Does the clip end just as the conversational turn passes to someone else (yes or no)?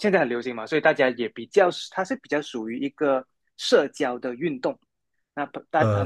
no